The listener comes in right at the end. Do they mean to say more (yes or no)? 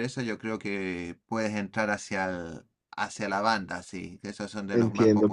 yes